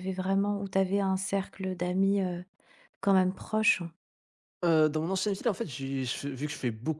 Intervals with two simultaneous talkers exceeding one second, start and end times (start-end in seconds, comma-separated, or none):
none